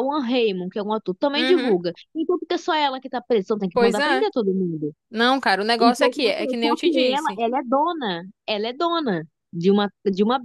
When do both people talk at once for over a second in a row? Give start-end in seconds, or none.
5.8-7.4